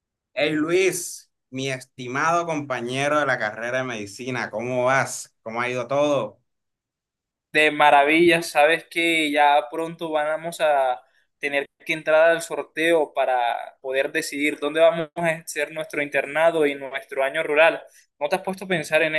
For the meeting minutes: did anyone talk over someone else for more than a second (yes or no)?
no